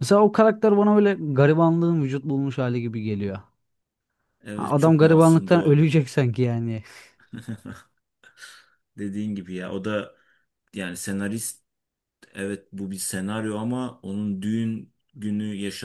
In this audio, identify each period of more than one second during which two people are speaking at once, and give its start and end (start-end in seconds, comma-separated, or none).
4.5-5.9